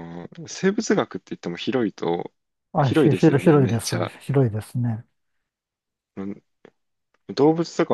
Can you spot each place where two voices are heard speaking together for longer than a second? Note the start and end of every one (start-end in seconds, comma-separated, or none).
2.8-4.1